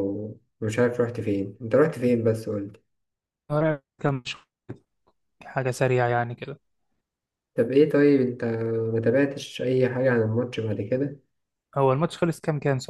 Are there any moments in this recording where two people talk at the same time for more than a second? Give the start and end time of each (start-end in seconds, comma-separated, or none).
none